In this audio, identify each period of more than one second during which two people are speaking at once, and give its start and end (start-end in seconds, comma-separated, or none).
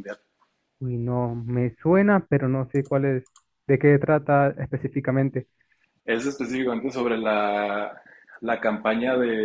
none